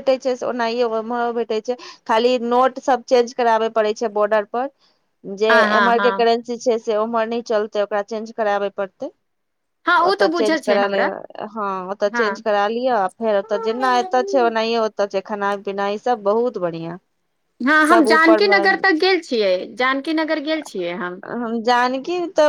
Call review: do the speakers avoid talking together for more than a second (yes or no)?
yes